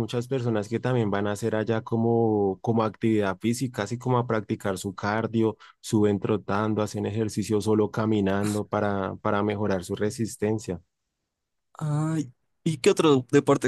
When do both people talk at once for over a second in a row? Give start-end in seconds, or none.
none